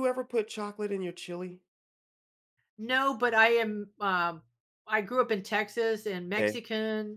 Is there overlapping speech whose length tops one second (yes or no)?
no